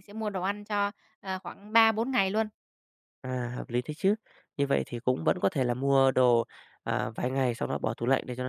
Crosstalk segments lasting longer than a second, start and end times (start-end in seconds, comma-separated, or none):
none